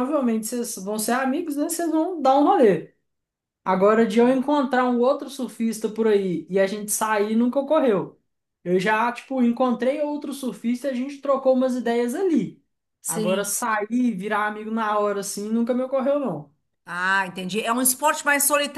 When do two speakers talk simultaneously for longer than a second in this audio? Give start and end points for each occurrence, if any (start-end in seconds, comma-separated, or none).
none